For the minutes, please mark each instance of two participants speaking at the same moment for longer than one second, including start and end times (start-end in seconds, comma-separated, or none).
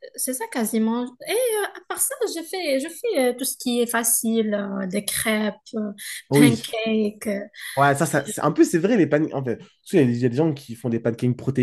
none